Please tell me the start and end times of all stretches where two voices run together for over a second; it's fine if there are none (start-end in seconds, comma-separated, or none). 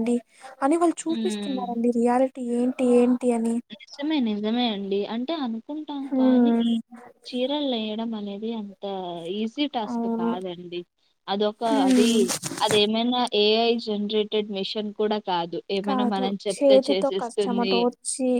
15.9-17.8